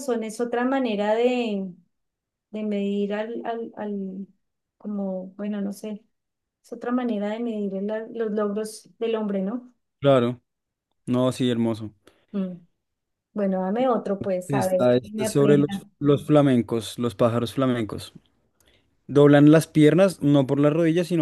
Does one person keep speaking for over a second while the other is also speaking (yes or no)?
yes